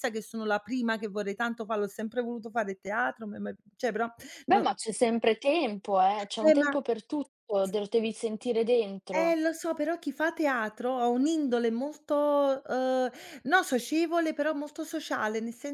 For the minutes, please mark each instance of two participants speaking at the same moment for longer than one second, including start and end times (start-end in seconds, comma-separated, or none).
none